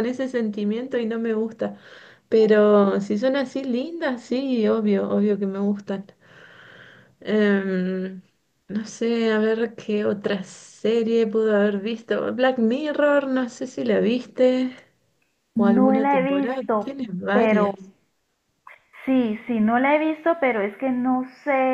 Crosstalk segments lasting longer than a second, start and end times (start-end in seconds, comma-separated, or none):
15.6-17.7